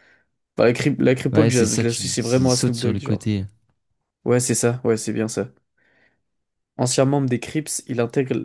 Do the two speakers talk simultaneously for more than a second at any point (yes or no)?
yes